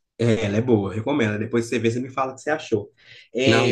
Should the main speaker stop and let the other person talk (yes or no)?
no